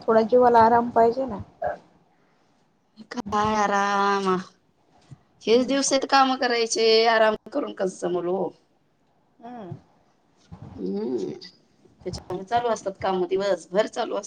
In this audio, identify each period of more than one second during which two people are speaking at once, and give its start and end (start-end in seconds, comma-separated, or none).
none